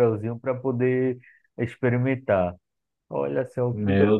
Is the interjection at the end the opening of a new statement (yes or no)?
yes